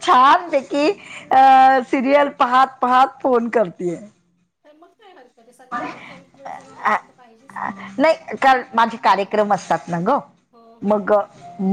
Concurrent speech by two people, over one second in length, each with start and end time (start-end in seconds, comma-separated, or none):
none